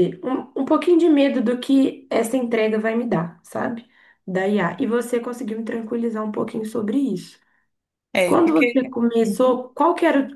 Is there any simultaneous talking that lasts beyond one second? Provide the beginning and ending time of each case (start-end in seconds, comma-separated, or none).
8.2-9.6